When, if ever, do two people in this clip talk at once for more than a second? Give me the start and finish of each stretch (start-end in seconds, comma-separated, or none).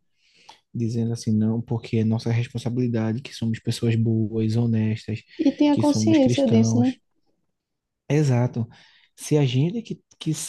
5.7-6.9